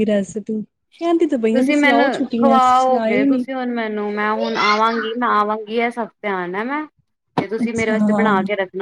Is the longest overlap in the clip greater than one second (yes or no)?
yes